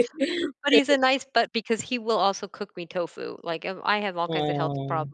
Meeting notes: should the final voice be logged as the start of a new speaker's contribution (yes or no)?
no